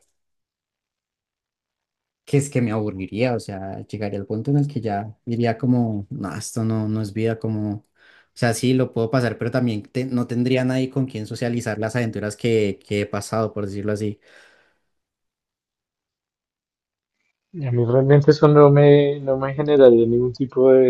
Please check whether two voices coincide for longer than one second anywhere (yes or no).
no